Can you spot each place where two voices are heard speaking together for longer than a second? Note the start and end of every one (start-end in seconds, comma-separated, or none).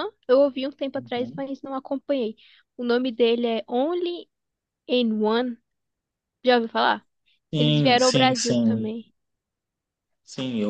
7.6-8.9